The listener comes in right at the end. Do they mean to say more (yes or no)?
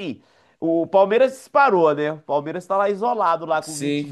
yes